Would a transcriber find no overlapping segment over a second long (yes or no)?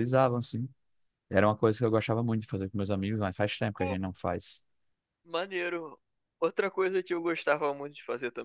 yes